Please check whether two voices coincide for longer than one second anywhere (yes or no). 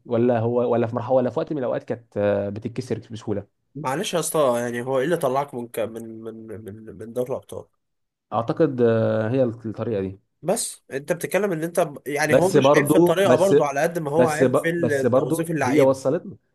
yes